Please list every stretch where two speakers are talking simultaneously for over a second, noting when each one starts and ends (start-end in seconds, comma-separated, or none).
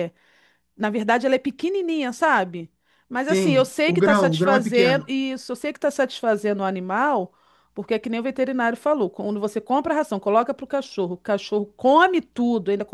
3.3-5.1